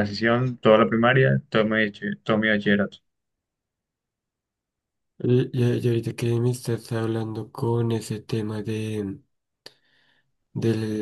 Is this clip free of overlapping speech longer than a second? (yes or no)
yes